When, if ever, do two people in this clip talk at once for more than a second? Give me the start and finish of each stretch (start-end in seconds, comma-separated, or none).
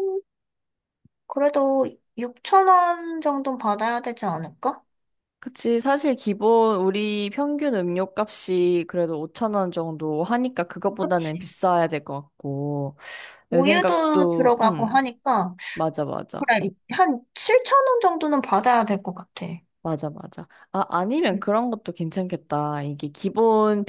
13.5-14.9